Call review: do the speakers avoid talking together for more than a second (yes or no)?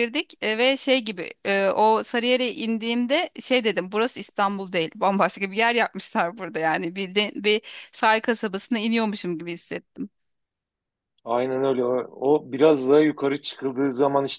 yes